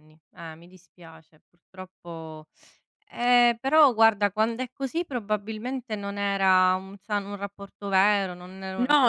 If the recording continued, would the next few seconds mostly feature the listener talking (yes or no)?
yes